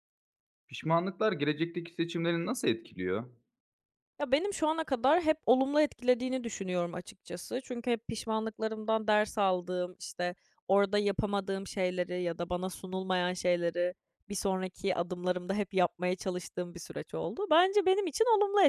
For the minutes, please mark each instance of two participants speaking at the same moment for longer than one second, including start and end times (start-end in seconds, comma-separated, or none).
none